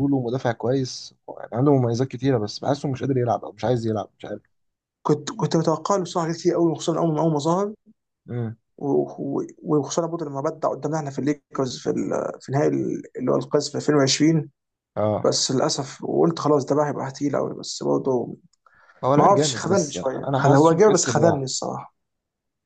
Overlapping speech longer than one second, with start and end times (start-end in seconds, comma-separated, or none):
19.2-21.5